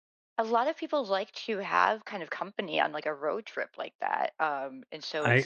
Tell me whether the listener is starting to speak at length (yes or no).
yes